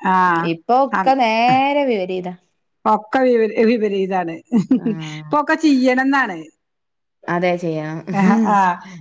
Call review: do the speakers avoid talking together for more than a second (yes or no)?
yes